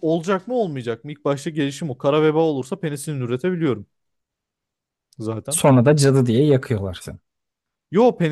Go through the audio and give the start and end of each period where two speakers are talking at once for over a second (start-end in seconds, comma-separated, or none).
none